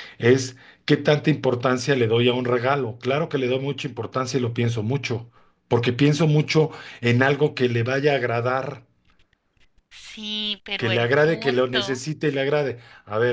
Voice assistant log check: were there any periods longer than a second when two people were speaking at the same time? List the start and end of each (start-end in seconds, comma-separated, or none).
10.8-12.0